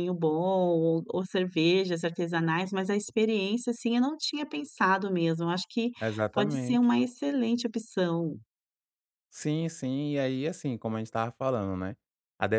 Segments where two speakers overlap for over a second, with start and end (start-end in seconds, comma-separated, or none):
none